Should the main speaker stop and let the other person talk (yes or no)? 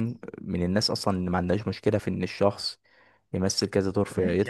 yes